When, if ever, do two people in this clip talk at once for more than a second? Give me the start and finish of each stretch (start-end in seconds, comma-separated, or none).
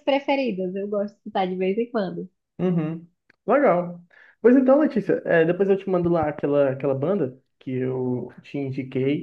none